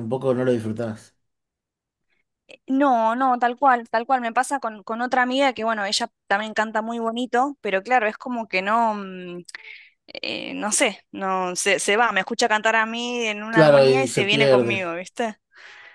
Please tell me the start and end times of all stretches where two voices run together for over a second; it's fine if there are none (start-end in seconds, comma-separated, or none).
13.5-14.8